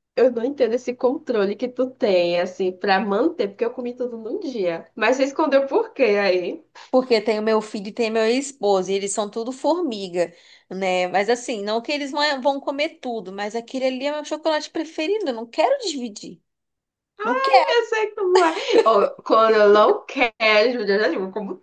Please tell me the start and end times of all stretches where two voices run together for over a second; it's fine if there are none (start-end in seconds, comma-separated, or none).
none